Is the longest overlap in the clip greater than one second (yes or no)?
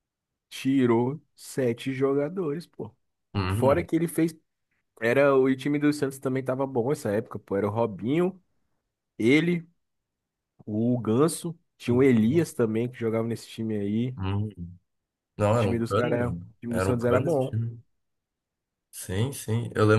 yes